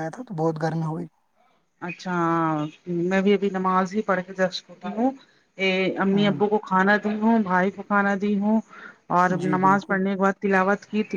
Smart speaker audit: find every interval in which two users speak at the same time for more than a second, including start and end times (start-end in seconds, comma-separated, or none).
none